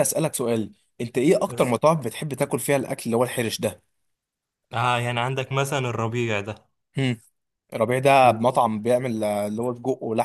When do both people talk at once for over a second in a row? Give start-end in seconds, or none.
none